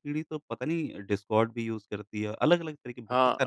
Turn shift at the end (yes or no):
yes